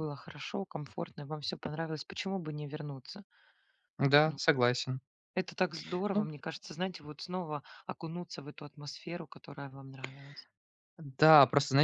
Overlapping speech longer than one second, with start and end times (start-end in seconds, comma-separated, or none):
none